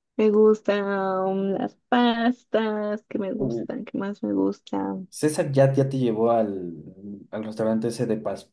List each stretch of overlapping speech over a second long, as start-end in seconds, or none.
none